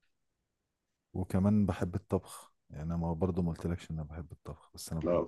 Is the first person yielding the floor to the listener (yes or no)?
yes